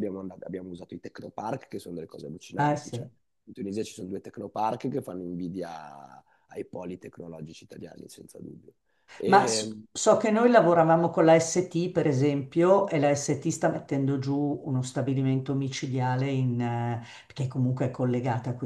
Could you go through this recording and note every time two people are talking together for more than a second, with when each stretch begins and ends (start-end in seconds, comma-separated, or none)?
none